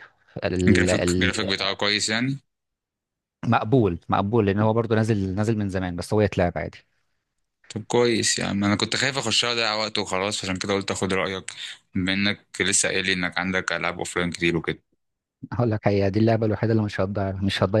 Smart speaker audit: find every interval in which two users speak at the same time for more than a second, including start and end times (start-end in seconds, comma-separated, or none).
none